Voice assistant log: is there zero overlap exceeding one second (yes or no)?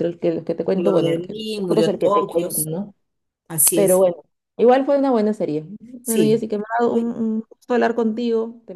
no